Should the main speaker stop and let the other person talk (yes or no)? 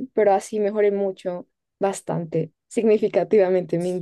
yes